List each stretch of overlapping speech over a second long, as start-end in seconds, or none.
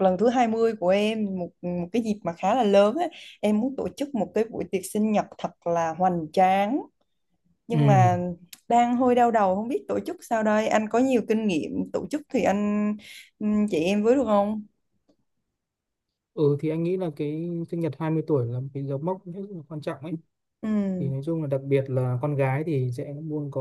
none